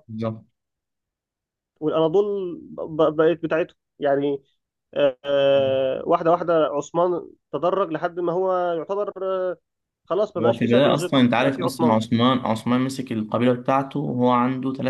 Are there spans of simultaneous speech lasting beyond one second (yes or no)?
yes